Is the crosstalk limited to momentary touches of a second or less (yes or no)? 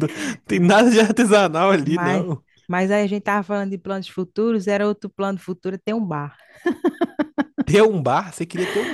yes